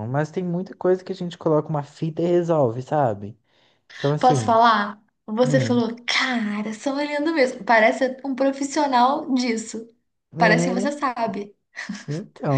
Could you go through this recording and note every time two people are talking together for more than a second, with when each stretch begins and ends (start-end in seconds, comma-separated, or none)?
none